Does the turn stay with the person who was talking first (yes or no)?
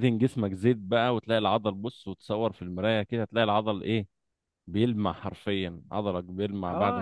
no